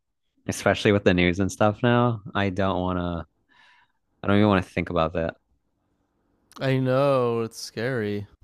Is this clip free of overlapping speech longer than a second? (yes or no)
yes